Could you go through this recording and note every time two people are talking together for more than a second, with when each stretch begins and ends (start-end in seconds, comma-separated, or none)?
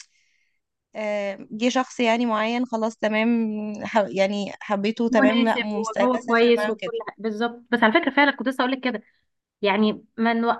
5.1-6.9